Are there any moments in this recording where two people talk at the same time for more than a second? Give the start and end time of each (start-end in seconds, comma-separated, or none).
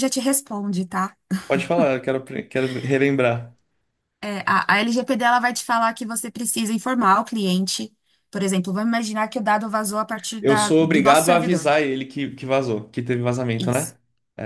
10.4-11.7